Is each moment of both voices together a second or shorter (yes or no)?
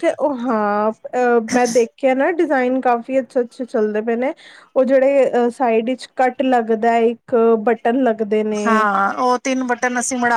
yes